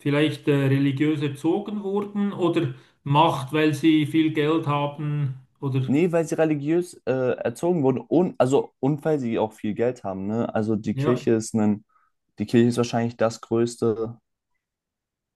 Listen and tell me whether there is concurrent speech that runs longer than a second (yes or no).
no